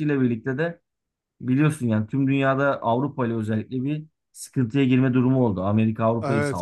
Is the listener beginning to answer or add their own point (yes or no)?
yes